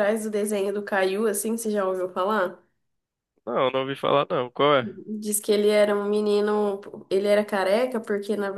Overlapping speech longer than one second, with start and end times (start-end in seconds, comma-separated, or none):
none